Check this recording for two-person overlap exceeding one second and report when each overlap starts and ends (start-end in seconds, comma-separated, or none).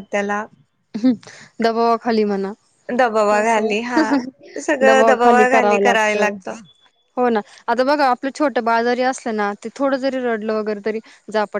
4.9-6.2